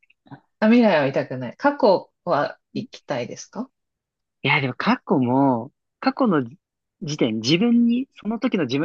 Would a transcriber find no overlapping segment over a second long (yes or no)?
yes